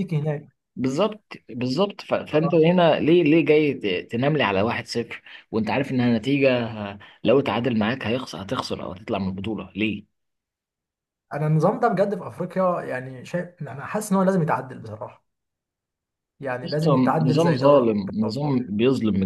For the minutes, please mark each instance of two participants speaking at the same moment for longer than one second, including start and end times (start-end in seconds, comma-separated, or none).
16.6-18.6